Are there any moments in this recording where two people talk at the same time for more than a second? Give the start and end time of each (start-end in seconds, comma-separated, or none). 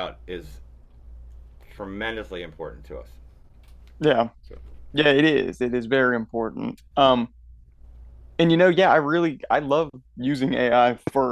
none